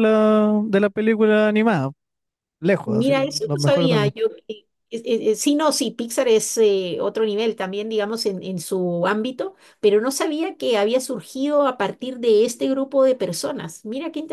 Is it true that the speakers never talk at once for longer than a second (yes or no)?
no